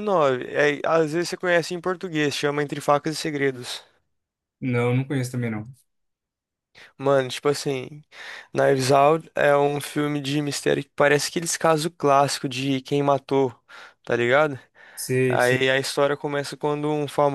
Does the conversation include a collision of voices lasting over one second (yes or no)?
no